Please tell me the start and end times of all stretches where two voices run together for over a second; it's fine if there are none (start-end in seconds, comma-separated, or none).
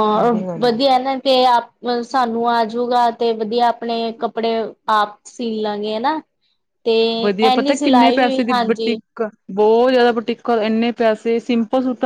7.5-8.9